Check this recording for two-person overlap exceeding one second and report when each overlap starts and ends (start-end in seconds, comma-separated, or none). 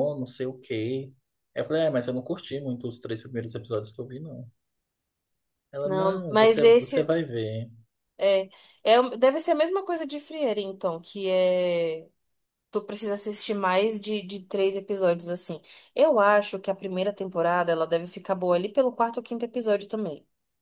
5.8-7.1